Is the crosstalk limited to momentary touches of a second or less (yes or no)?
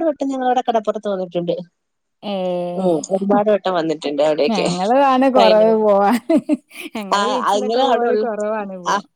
yes